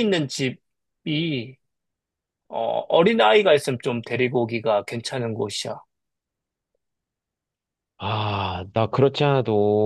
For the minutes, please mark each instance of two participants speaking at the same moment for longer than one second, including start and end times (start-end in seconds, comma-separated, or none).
none